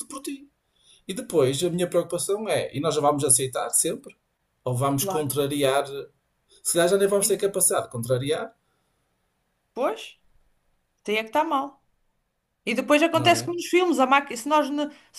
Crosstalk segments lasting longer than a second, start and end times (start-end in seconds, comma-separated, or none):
none